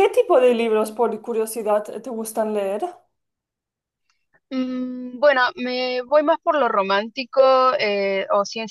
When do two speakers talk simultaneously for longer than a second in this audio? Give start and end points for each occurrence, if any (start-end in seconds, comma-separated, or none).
none